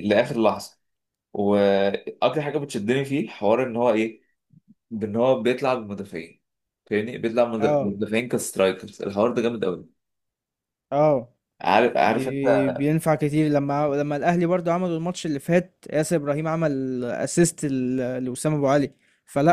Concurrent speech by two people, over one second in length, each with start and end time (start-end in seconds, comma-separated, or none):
none